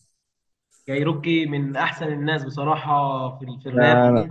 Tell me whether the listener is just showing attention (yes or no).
no